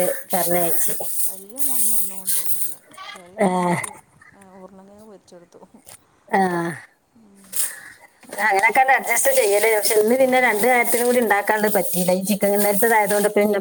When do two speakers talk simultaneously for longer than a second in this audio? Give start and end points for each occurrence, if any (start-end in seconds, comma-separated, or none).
none